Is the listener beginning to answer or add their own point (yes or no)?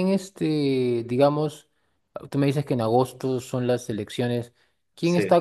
no